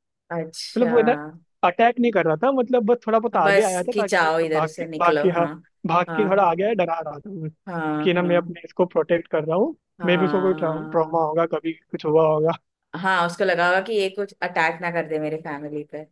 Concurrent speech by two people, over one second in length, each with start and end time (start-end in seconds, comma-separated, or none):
3.4-5.5, 10.0-11.2